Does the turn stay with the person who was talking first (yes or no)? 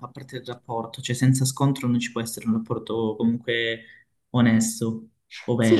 no